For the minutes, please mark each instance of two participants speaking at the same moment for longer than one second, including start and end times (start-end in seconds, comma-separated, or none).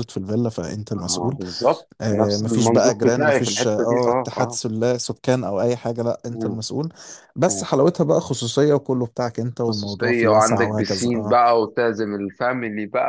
2.0-4.6, 9.6-11.4